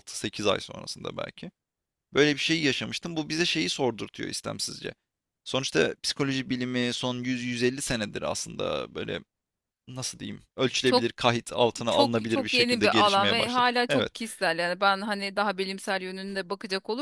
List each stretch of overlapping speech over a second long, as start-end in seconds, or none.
11.9-14.1